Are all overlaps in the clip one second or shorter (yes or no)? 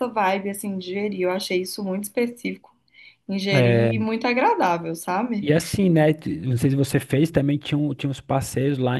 yes